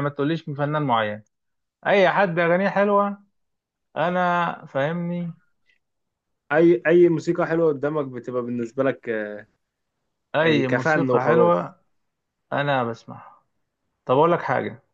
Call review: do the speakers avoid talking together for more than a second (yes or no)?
no